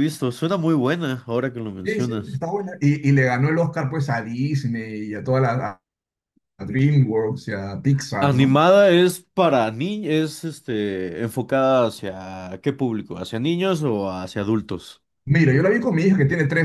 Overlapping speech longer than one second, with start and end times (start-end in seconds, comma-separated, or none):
none